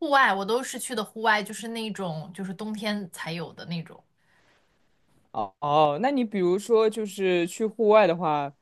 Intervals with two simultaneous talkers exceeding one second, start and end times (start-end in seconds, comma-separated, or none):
none